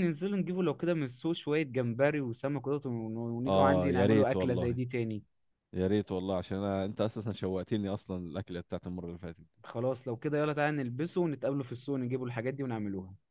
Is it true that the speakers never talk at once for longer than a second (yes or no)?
no